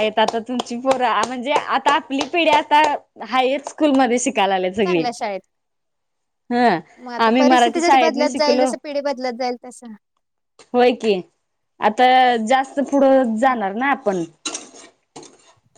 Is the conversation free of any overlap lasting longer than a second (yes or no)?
no